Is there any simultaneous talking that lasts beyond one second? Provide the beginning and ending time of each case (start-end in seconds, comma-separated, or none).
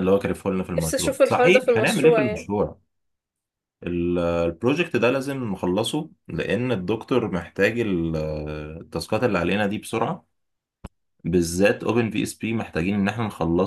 0.8-2.5